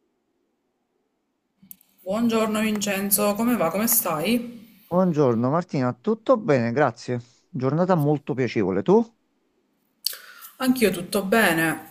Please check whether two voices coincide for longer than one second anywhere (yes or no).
no